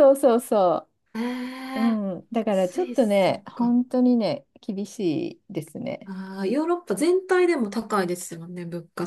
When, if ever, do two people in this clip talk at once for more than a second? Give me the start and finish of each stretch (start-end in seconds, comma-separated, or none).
2.5-3.8